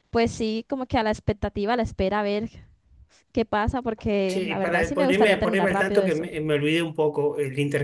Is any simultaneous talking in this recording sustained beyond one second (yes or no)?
yes